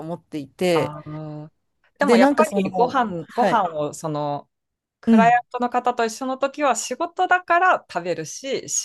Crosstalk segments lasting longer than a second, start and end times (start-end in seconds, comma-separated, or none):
2.0-3.7